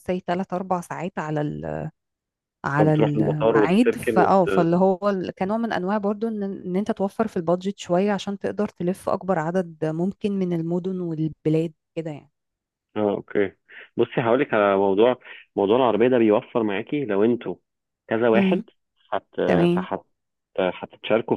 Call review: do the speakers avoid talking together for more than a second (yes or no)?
no